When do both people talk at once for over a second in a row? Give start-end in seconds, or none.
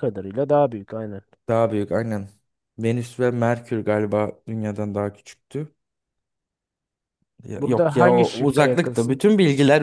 7.6-9.2